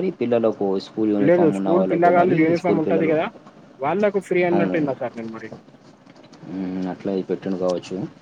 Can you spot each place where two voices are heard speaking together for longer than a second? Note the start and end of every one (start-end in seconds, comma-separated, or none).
1.3-3.1